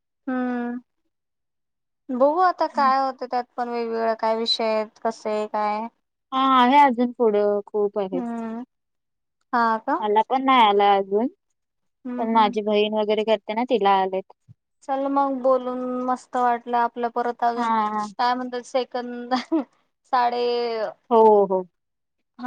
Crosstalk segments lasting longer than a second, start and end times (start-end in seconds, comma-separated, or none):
none